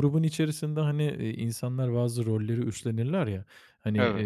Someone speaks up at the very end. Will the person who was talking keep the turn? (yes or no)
yes